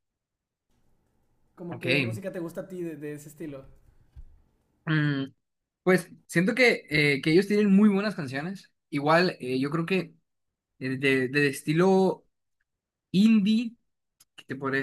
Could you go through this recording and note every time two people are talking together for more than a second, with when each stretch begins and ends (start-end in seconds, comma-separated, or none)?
none